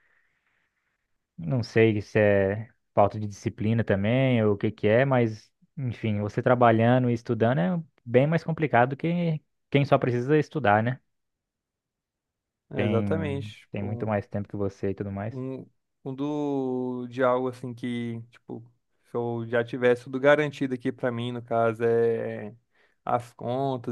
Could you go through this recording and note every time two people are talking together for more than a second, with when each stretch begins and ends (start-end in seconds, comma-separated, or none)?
12.7-14.1